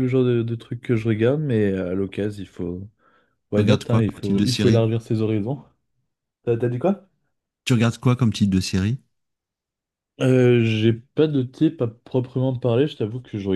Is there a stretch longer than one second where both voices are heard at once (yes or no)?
yes